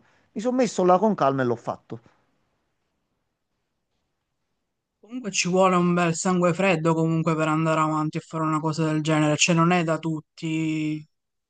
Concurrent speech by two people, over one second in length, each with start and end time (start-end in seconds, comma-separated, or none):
none